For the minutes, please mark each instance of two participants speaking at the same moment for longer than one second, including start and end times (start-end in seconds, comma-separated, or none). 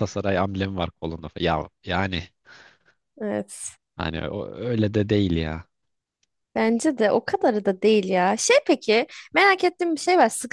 none